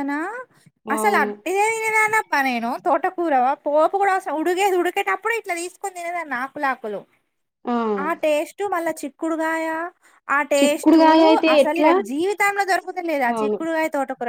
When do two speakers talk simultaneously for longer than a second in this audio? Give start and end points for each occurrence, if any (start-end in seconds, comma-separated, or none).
none